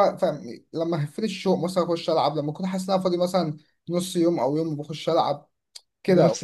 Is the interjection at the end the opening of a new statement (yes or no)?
no